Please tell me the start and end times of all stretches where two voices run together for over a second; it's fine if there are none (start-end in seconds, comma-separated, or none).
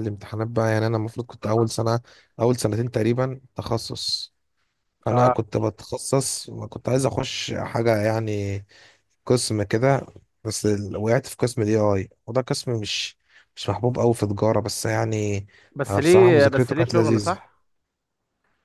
15.9-17.4